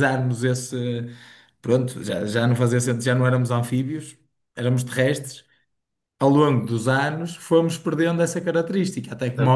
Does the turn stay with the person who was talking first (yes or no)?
no